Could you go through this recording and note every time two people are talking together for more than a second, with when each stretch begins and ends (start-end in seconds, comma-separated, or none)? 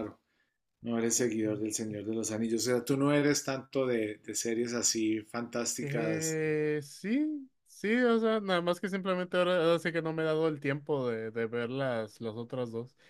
none